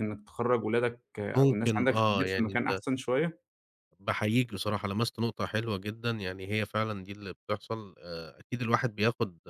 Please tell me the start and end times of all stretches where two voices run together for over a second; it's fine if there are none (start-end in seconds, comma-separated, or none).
1.4-2.8